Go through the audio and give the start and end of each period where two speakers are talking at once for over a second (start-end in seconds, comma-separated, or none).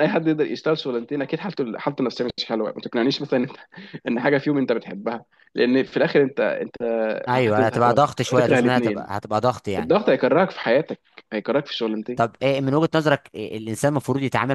7.3-9.1